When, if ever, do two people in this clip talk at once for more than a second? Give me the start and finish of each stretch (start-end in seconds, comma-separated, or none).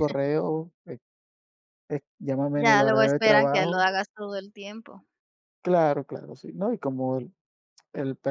2.5-3.9